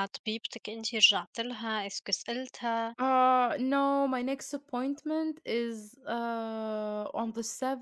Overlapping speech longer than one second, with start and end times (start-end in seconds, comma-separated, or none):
none